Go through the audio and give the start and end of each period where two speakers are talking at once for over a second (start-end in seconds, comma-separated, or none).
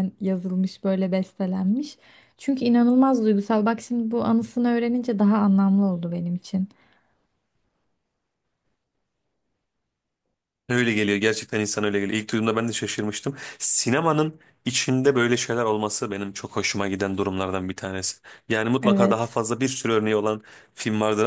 none